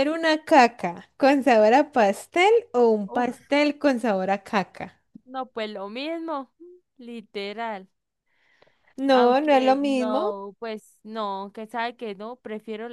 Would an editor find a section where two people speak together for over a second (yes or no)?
yes